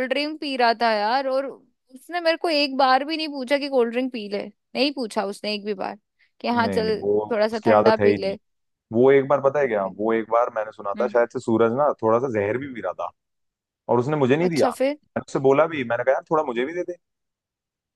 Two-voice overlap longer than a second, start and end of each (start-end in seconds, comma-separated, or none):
6.5-8.4